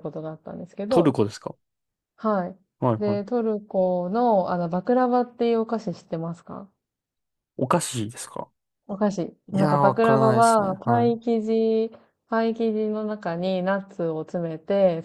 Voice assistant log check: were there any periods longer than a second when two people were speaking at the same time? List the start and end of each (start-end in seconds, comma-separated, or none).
9.5-11.1